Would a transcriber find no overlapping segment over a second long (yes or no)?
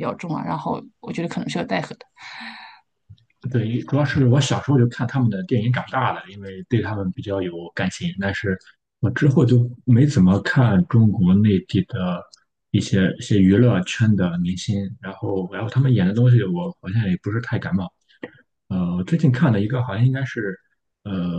yes